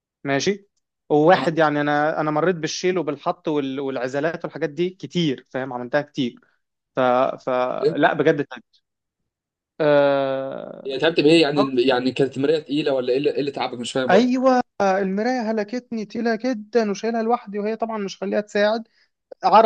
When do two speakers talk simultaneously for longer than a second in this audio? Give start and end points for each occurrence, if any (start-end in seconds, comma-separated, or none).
none